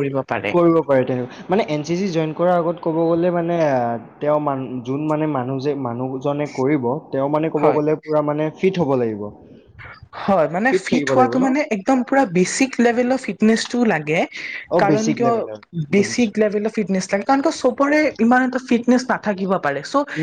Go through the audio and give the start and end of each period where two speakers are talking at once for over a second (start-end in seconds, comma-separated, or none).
none